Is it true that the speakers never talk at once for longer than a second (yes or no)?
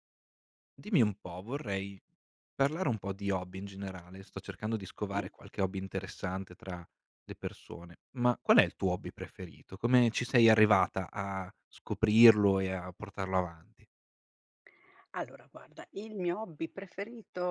yes